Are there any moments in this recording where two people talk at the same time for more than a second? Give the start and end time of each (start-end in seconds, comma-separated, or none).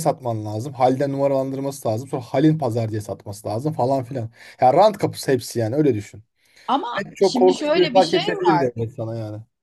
7.0-8.7